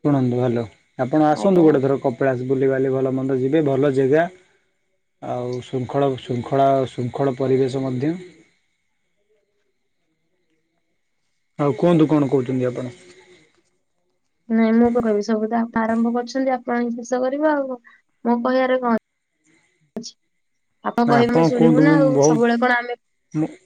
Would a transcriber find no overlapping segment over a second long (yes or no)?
no